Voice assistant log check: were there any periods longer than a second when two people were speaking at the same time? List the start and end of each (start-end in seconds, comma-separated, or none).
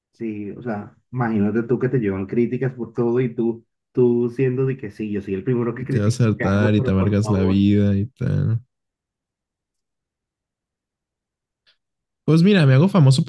5.8-7.6